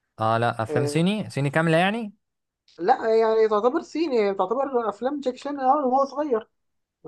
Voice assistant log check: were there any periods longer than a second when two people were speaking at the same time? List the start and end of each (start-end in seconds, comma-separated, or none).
none